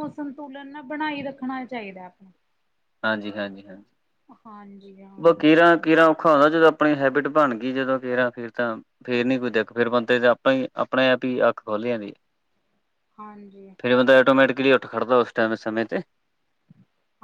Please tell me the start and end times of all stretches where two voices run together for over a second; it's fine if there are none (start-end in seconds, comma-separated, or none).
none